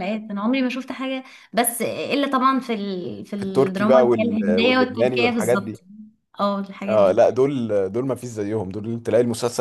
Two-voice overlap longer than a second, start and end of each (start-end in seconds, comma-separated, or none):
3.4-5.8